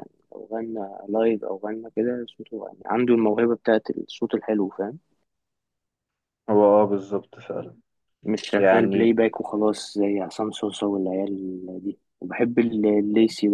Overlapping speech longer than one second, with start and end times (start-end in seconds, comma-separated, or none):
none